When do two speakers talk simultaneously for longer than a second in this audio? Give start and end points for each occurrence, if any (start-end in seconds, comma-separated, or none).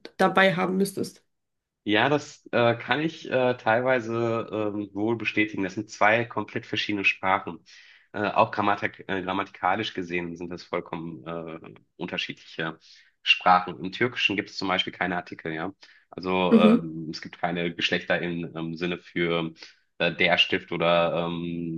none